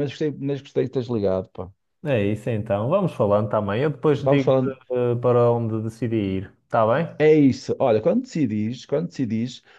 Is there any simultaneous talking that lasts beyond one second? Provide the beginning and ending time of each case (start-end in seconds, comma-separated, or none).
none